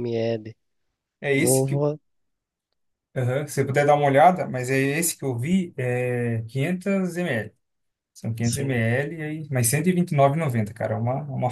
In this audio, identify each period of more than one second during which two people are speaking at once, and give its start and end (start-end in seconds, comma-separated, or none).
none